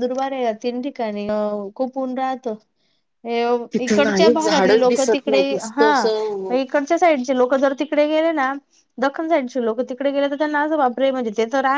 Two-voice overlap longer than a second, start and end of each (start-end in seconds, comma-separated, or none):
3.8-5.9